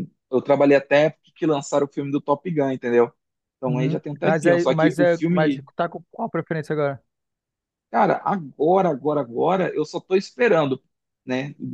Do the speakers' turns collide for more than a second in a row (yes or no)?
yes